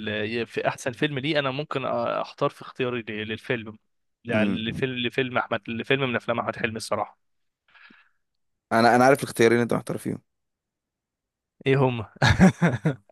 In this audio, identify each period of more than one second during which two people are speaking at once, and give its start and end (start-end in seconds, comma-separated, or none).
none